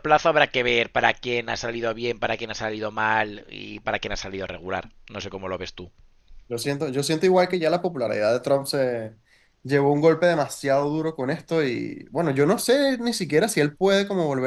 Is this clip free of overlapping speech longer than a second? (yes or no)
yes